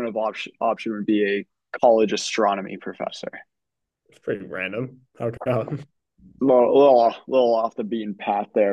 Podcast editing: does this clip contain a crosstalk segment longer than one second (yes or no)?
no